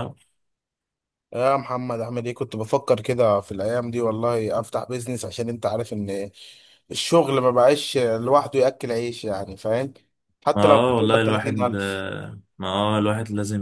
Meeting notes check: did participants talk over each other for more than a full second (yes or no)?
yes